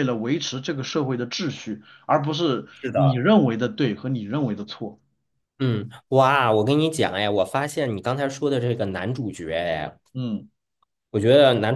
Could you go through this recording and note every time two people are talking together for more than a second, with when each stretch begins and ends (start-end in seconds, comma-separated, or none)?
none